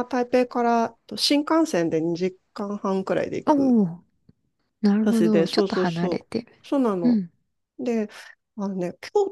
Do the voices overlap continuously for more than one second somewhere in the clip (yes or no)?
yes